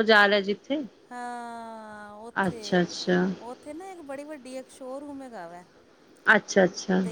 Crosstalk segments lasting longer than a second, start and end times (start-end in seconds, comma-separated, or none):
none